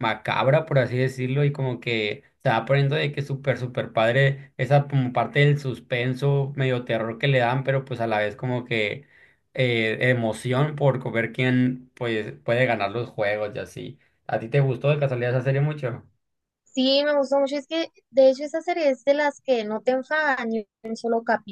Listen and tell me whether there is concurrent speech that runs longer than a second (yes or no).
no